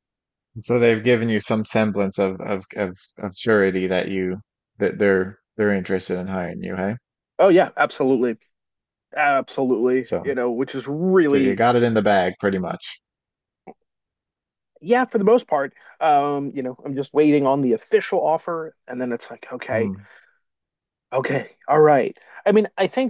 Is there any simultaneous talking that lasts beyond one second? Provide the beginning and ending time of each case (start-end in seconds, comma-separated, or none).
none